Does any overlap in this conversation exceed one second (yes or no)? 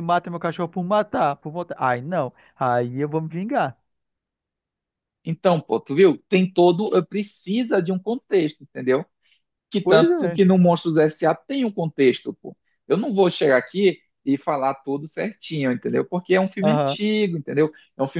no